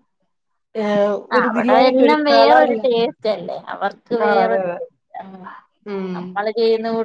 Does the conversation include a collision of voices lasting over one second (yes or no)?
yes